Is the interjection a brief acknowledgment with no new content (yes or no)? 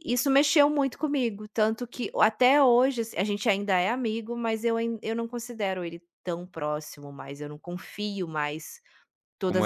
yes